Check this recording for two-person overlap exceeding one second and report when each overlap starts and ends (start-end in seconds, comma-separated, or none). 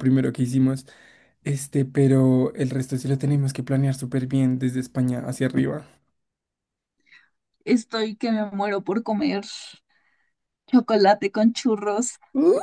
none